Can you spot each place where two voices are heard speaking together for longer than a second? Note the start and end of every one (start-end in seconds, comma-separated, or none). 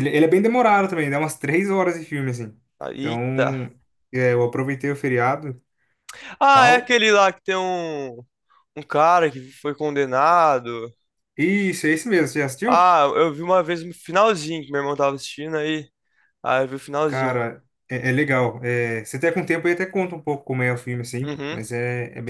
none